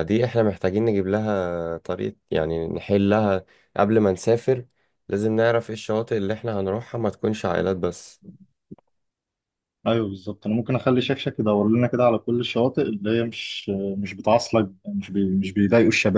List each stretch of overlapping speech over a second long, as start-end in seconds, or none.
none